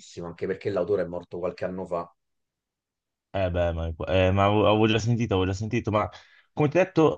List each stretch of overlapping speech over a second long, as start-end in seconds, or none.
none